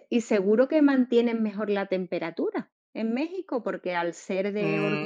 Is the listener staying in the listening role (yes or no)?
no